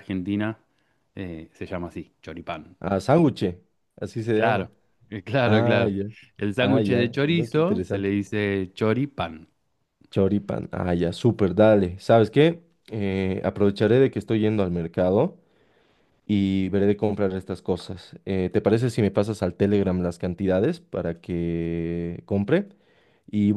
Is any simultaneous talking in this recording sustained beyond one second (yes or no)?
yes